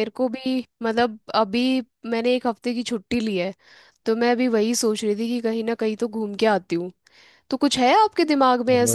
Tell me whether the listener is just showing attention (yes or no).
no